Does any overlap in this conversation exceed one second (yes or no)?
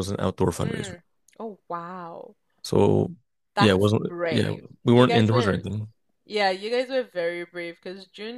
yes